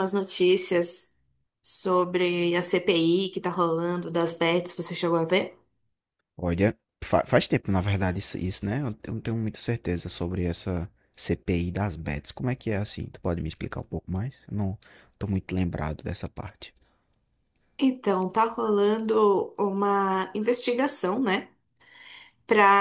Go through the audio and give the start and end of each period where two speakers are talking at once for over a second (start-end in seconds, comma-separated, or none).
none